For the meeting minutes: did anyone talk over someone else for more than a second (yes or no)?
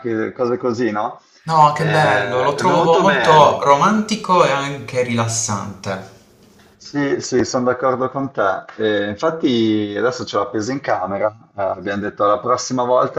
yes